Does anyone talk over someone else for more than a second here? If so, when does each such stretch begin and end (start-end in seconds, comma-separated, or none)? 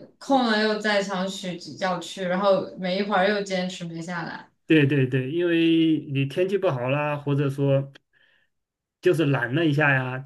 none